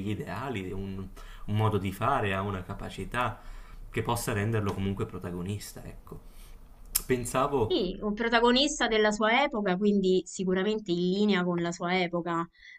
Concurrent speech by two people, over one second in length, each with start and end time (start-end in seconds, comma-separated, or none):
none